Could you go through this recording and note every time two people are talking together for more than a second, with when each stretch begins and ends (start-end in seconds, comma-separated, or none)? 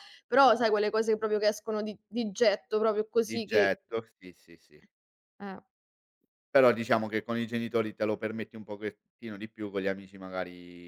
none